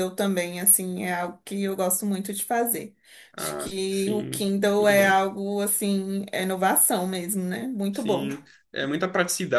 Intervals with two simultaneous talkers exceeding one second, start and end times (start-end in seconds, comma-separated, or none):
3.4-5.2